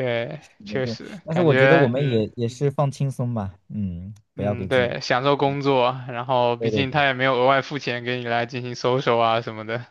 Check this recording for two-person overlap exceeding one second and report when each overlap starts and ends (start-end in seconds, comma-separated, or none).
0.6-2.2